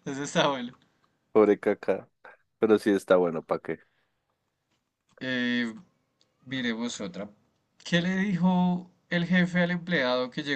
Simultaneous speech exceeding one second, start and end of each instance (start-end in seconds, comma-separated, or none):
none